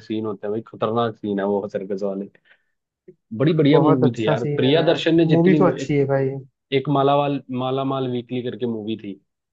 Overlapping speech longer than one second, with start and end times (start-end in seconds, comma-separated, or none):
3.7-6.0